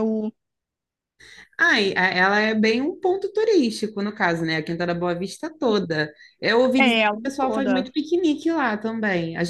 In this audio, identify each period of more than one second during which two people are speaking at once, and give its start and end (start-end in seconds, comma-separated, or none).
6.8-8.0